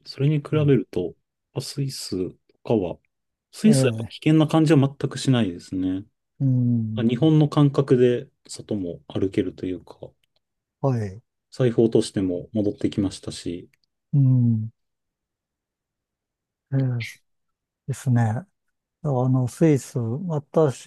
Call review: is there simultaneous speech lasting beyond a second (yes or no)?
no